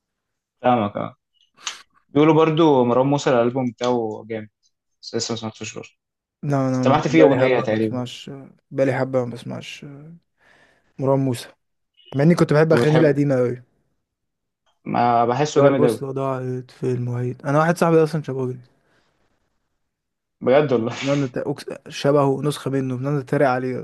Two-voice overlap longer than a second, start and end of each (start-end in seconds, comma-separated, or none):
6.7-8.0